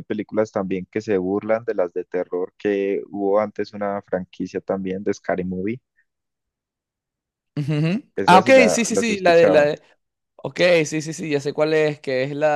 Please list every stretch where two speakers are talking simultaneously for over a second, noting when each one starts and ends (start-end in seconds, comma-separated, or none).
8.2-9.7